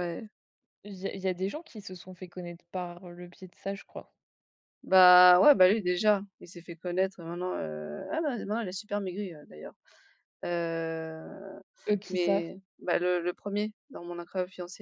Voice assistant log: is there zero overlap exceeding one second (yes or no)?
yes